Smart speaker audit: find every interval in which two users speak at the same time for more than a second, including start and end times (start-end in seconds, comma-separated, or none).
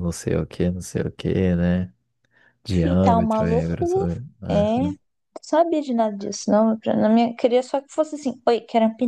2.7-4.1